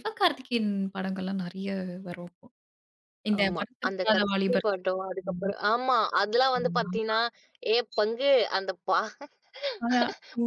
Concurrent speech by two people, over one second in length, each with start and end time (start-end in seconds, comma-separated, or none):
3.4-5.5